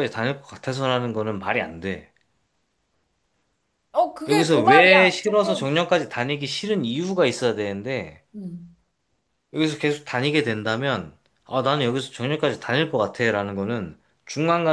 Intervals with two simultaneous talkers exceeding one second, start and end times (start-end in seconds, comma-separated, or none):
4.3-5.7